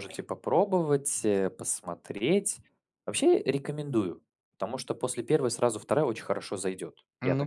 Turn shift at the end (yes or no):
yes